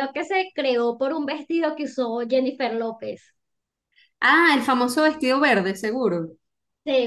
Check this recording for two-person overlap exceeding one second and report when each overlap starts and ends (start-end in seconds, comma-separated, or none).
none